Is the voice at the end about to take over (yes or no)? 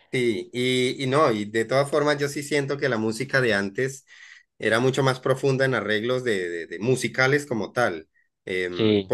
no